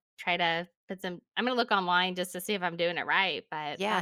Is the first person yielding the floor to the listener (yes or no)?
yes